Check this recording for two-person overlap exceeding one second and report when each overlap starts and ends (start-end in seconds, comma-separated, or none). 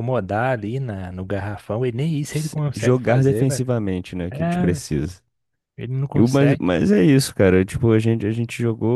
2.3-3.6